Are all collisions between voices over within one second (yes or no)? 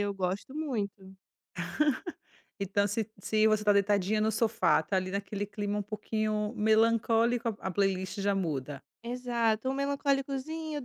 yes